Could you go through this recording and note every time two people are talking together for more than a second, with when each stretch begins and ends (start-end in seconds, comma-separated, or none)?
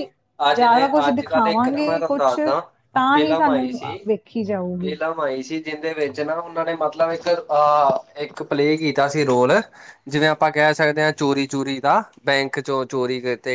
0.6-2.3